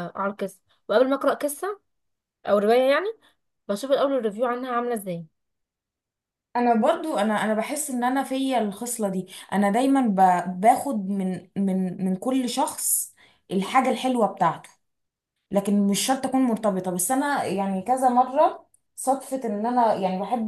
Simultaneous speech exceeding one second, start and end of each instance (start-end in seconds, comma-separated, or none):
none